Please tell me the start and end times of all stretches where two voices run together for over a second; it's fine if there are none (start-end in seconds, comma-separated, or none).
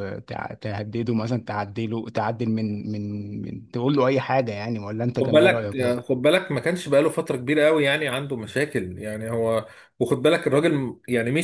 none